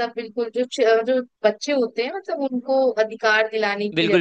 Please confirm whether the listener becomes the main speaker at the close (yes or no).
yes